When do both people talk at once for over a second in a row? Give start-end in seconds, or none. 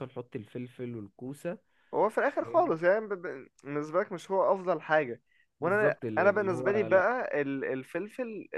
5.6-7.1